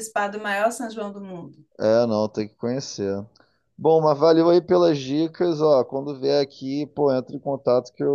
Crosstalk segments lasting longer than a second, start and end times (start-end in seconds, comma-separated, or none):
none